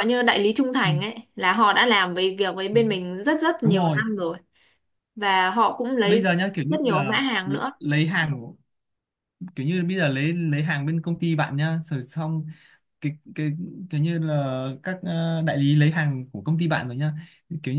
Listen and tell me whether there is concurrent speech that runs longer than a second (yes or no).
yes